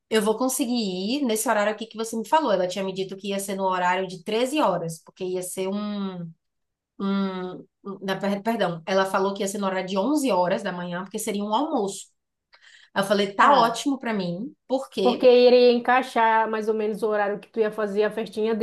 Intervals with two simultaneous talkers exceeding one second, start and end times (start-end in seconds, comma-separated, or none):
none